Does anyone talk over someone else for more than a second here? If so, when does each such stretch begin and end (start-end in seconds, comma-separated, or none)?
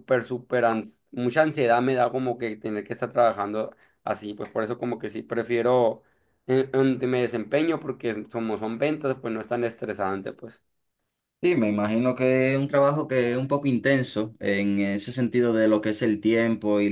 none